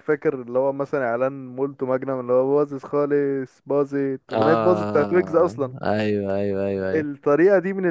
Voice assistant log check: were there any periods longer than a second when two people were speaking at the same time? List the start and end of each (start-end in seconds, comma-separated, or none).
4.3-5.8